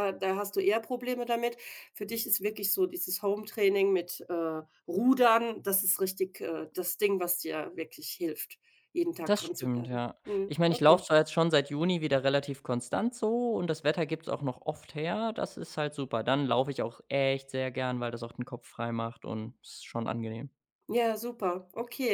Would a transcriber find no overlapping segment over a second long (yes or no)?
no